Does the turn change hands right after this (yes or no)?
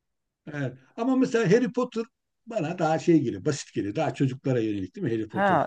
yes